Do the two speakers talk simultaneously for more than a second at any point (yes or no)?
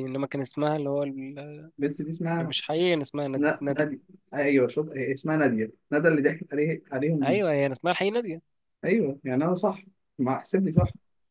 no